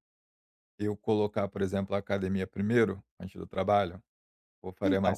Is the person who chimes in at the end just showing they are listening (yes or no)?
yes